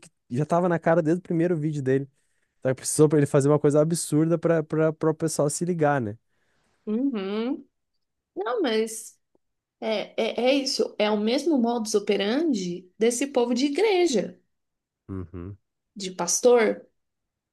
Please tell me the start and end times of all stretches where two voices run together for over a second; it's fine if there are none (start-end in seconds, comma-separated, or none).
none